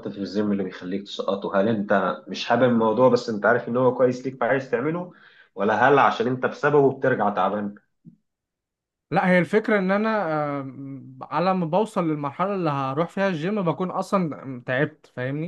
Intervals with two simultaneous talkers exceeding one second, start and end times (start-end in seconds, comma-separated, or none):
none